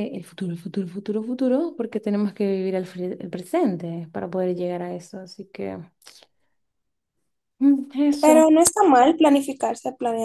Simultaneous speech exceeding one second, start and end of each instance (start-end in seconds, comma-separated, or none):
none